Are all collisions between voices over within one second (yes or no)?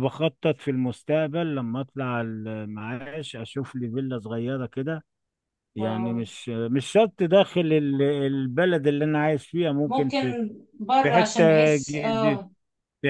no